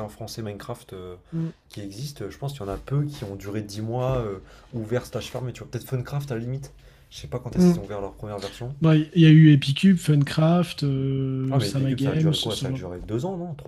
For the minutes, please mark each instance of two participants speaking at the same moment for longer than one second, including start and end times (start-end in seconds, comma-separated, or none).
11.5-12.9